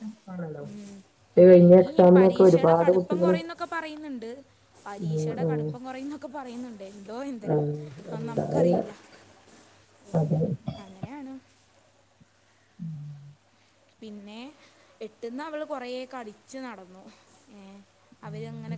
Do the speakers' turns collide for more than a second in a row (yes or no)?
yes